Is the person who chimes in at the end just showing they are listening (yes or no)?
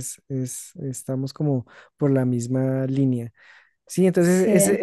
yes